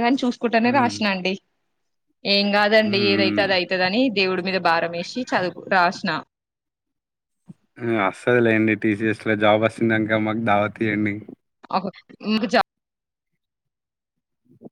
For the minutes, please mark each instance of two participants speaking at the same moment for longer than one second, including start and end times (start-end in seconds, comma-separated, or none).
none